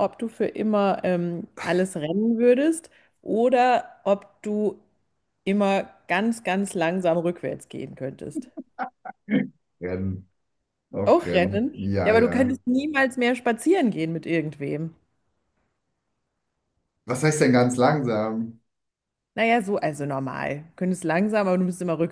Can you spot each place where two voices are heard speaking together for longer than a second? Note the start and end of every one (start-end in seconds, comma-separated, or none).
11.0-12.6